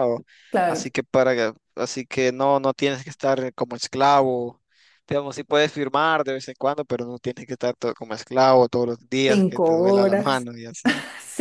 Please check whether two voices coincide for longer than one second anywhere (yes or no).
yes